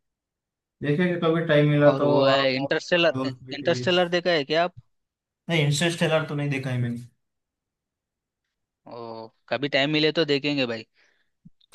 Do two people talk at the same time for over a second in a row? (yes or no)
yes